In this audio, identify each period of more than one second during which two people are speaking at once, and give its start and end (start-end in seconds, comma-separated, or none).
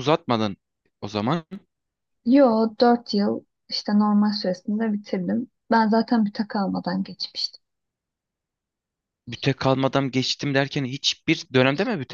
none